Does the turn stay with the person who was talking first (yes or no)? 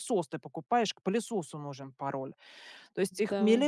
yes